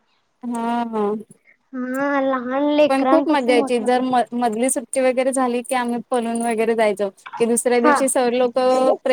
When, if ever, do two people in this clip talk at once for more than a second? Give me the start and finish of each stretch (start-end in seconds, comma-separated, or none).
2.9-4.2